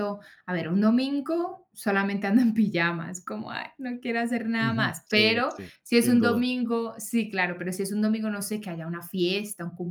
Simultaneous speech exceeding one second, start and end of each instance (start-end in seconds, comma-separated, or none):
4.6-6.5